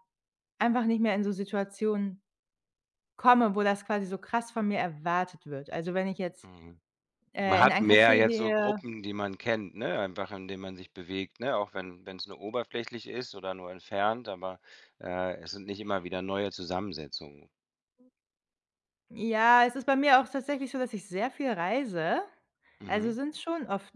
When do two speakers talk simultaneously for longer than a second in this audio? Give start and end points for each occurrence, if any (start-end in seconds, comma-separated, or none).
7.4-8.8